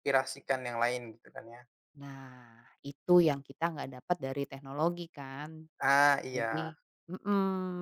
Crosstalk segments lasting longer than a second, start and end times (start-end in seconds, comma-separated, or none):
none